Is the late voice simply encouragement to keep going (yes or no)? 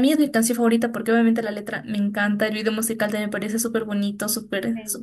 yes